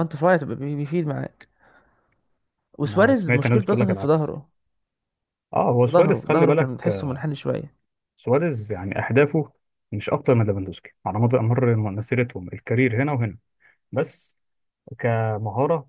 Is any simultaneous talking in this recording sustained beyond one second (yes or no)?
yes